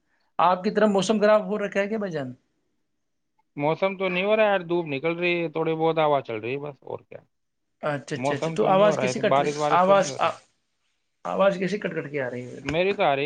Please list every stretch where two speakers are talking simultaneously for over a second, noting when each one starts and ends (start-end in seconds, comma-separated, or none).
8.2-10.1